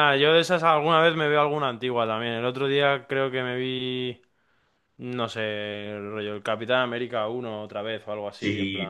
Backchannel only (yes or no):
no